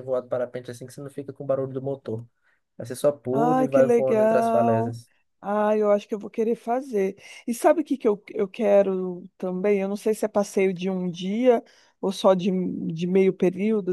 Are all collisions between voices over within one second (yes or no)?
no